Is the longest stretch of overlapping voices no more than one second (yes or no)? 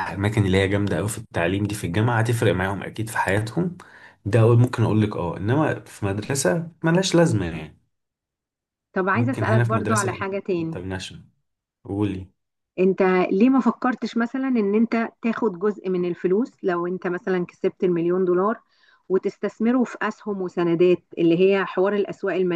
no